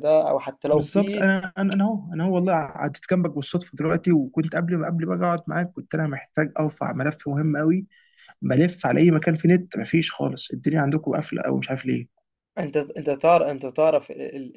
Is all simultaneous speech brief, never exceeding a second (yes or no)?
yes